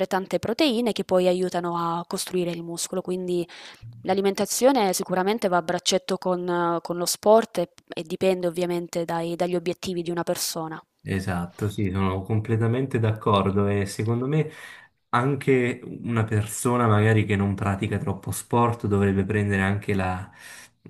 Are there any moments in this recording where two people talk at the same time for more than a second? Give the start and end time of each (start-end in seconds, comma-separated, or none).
none